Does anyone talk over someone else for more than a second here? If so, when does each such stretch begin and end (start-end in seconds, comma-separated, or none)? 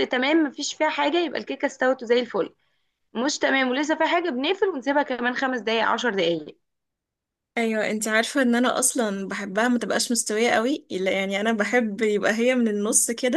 none